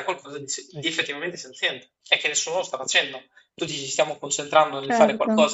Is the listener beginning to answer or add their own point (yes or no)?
no